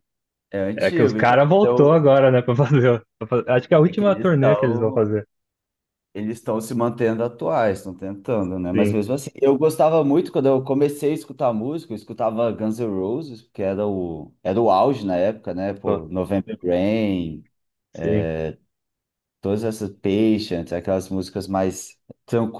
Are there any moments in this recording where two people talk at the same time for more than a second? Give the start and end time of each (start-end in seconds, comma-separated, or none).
0.8-2.0, 3.8-5.1